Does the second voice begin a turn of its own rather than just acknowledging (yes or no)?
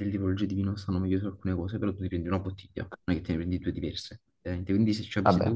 no